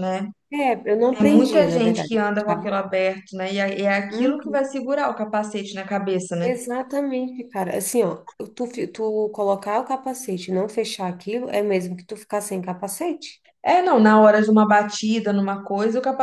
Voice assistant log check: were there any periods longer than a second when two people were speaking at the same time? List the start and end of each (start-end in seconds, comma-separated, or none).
1.1-2.8